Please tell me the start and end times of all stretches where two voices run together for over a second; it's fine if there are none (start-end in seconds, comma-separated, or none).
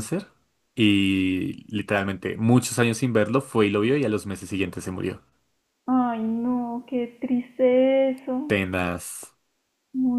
none